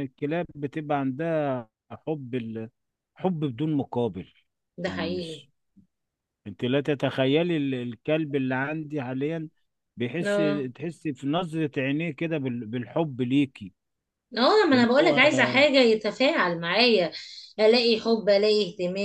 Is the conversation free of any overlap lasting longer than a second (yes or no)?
yes